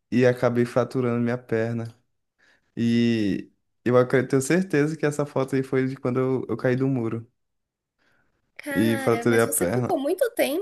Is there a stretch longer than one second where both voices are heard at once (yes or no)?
yes